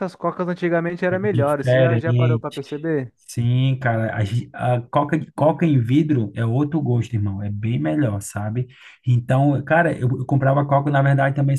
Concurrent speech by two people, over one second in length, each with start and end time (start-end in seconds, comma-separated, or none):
1.1-2.6